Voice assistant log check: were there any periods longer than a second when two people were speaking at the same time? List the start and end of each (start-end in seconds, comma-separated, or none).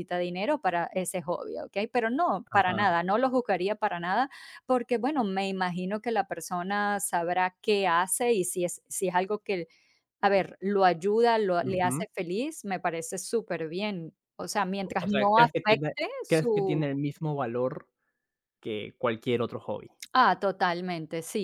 15.0-16.8